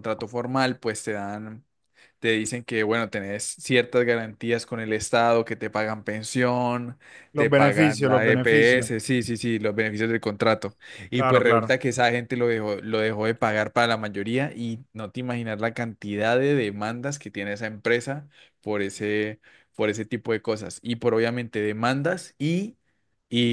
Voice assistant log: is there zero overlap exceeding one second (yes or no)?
no